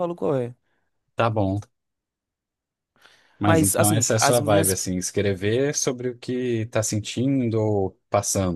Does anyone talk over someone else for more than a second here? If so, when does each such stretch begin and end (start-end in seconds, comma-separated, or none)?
3.4-4.8